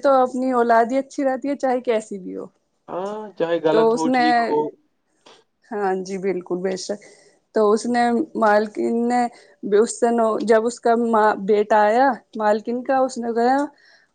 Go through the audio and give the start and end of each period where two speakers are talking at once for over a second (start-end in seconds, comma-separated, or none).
none